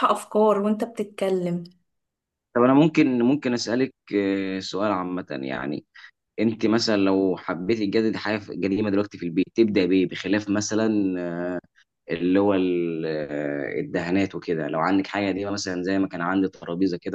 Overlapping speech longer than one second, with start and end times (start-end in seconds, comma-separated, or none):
none